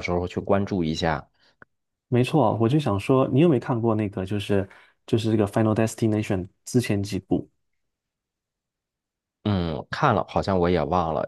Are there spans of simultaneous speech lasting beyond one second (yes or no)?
no